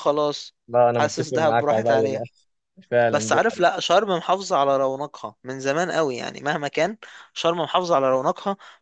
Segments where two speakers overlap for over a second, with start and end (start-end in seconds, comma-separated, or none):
1.0-2.2